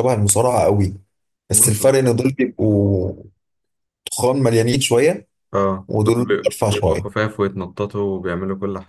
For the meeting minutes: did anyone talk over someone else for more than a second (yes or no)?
yes